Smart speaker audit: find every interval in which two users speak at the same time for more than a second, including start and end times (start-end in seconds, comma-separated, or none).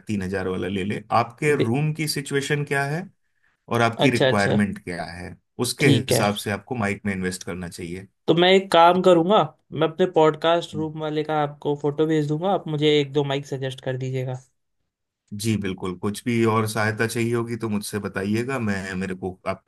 none